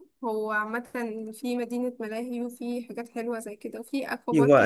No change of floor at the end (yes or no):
no